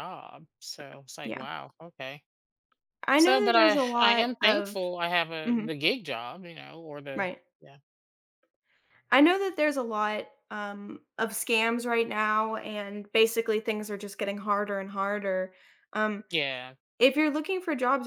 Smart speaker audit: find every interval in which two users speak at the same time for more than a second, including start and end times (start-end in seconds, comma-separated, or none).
3.2-4.8